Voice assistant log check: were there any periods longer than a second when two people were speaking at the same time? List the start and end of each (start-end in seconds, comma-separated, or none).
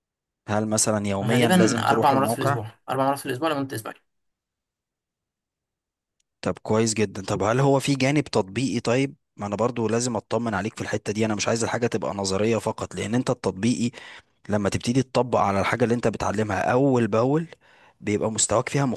1.2-2.6